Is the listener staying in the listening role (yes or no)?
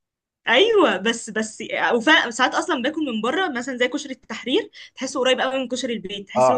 no